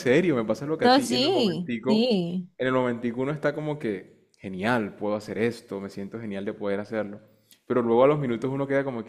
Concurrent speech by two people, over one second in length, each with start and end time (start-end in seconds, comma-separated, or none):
0.8-2.1